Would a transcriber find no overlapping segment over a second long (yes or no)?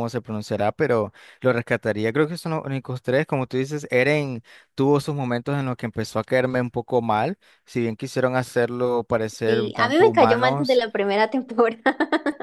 no